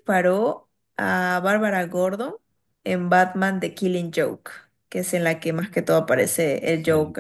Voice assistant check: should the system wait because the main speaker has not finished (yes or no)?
no